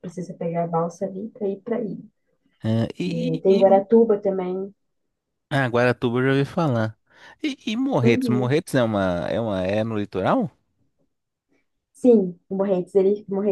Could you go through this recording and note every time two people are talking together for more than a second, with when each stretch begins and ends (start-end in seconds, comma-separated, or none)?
none